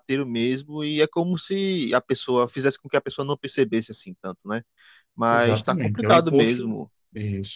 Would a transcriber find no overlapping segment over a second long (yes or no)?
no